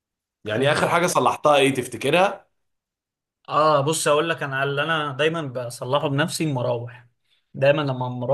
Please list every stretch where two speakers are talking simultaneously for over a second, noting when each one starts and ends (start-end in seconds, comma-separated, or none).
none